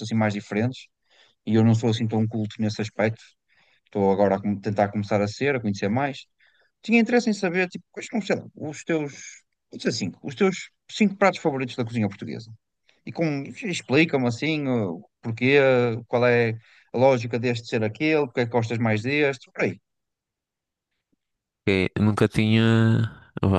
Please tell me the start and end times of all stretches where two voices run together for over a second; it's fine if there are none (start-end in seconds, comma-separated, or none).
none